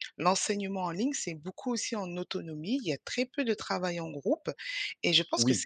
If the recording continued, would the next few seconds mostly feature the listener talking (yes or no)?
no